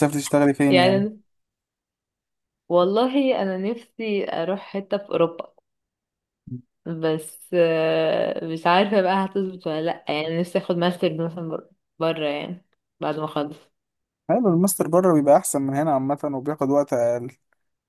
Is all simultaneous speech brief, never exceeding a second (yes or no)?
yes